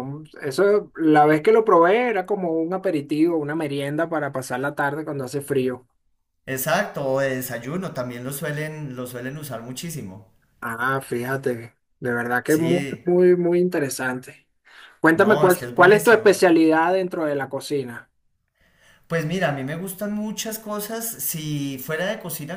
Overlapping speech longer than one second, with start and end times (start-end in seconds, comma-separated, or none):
15.1-16.4